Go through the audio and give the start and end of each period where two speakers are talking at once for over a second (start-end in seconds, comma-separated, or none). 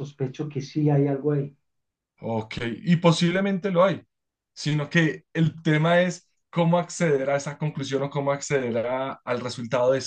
none